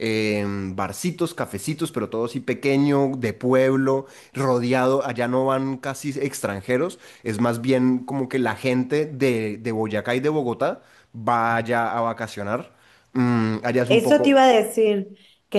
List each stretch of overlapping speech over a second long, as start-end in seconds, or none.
none